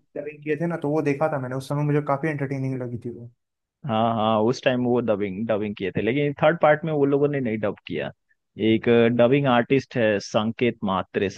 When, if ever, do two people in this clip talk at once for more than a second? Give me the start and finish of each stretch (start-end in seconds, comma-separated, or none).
none